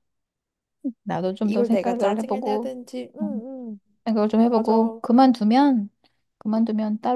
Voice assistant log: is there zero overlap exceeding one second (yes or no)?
no